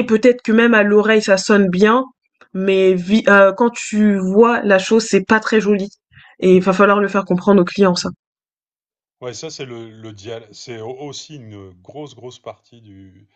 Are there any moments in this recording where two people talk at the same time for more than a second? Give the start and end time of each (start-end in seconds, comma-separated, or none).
none